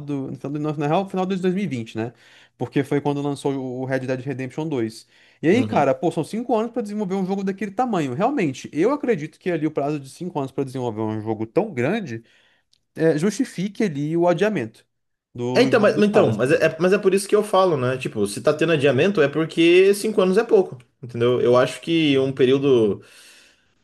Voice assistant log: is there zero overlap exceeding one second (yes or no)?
no